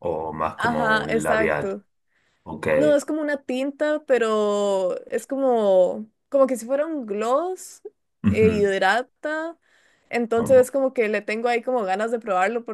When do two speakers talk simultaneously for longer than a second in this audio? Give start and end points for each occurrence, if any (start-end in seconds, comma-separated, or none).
0.6-1.8